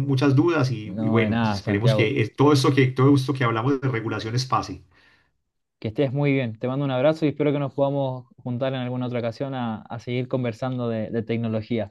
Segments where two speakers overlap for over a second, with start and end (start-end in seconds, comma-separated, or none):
0.8-2.1